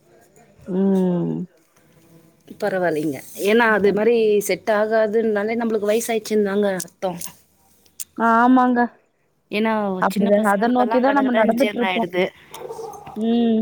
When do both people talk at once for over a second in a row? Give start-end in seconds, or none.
10.1-12.1